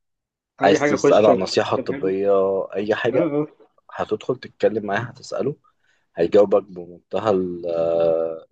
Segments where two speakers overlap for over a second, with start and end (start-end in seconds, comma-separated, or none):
0.6-2.2